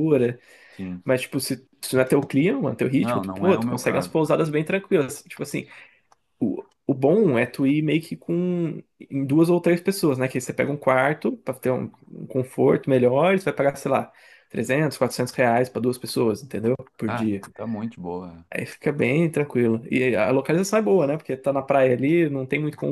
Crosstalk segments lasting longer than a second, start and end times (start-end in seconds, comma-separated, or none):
2.9-4.2